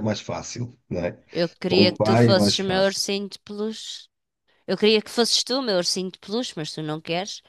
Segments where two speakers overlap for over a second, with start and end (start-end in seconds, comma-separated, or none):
1.7-3.0